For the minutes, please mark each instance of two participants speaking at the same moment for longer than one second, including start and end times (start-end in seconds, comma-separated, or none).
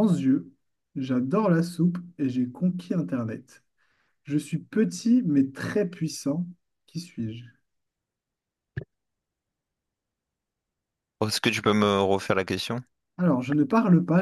none